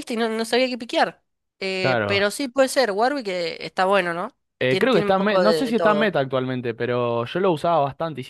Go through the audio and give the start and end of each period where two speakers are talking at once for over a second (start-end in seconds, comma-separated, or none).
4.6-6.1